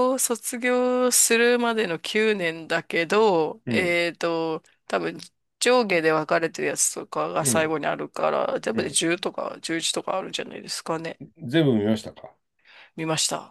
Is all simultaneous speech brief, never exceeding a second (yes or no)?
yes